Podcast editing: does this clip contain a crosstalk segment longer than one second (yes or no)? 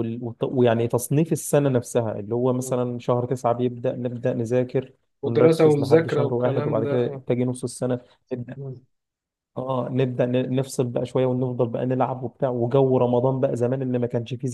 yes